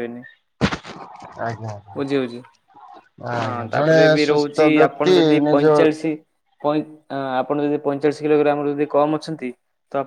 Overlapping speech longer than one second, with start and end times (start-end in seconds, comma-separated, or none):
3.4-5.6